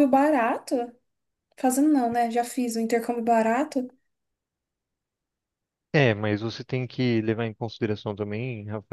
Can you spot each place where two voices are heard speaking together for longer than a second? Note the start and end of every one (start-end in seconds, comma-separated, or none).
none